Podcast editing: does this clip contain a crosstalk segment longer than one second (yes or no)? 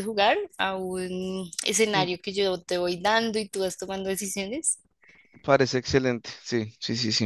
no